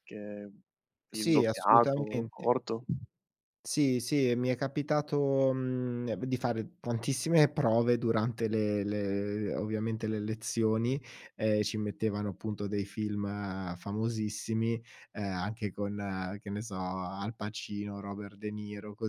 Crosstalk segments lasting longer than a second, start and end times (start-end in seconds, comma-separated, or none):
1.1-2.5